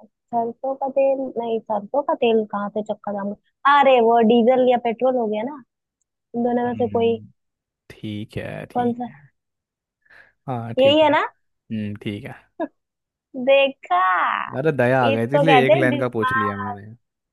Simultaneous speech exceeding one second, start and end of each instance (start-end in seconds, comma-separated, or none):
15.1-16.8